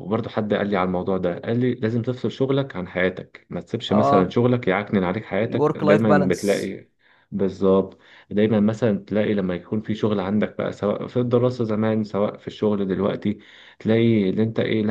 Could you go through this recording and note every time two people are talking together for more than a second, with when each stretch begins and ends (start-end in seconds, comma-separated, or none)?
5.4-6.7